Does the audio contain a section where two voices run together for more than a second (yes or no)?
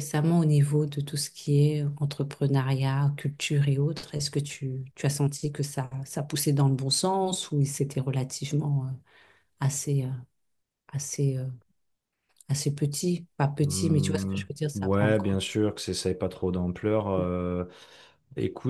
yes